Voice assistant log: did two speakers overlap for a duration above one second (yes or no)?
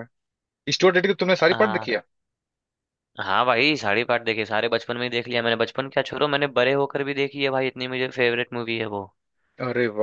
no